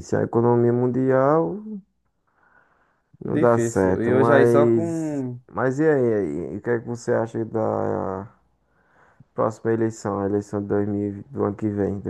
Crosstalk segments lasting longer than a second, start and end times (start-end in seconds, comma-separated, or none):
3.2-5.4